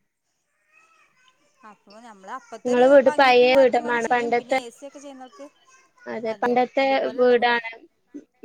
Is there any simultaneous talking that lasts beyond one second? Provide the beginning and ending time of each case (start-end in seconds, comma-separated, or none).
2.6-4.6